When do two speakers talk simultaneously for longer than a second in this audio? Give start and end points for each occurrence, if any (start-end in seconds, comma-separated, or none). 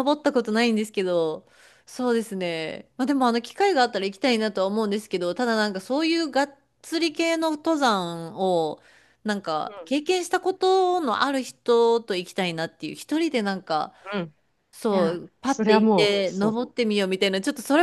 14.9-16.6